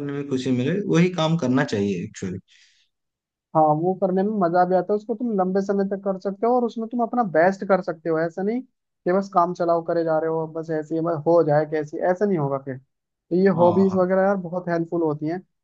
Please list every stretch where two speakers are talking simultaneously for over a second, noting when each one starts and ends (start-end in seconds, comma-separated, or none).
none